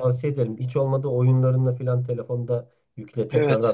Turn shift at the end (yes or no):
no